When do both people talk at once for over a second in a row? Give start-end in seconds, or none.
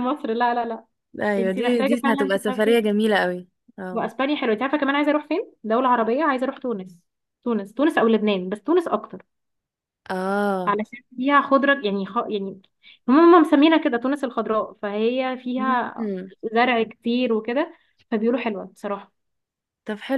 1.4-2.9